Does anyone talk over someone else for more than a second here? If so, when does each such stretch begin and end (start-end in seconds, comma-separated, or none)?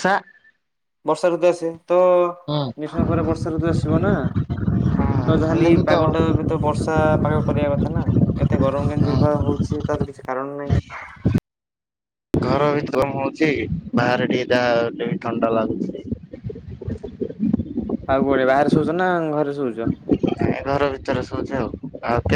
none